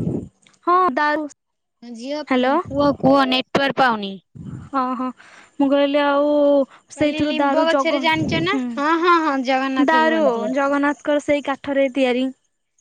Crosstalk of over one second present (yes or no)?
yes